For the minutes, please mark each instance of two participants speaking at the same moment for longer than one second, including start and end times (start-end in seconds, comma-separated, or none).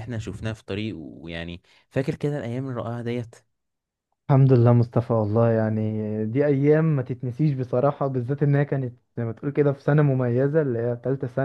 none